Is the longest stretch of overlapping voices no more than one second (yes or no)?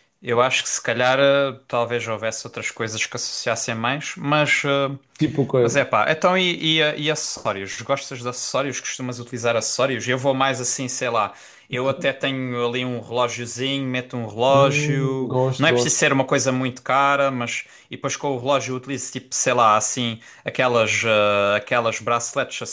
no